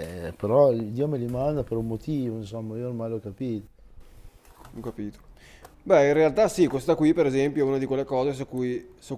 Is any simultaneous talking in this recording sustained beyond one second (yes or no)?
no